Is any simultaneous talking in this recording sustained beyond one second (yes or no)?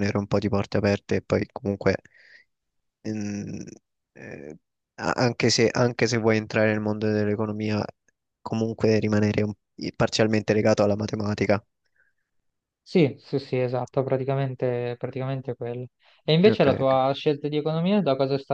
no